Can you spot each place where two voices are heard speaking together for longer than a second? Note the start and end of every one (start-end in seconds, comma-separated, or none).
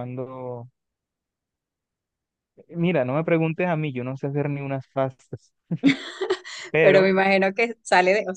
none